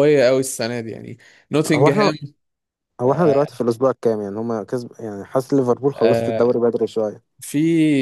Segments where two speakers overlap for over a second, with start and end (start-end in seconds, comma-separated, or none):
none